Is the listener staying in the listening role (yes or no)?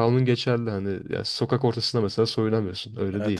yes